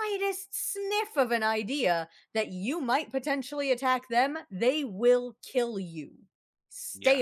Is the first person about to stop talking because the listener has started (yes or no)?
yes